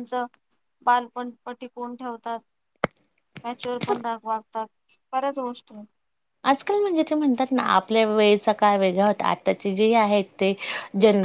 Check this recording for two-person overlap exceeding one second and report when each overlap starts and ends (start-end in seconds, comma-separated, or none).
none